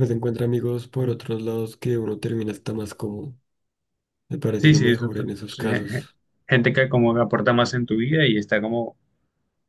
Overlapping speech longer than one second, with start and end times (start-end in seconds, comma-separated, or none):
4.6-6.1